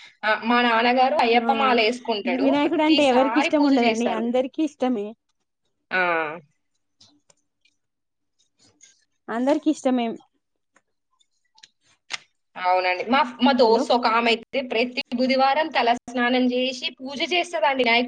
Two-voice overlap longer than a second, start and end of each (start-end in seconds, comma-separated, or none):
2.5-4.2